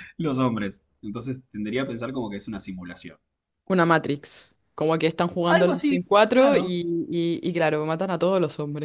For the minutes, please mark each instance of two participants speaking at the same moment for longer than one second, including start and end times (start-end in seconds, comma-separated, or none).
5.5-6.8